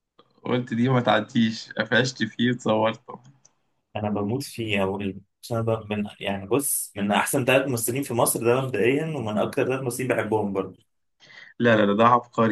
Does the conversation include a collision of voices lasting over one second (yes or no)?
no